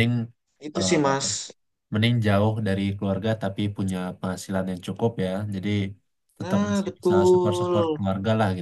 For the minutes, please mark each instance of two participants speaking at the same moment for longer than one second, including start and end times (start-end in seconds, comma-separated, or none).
6.4-8.0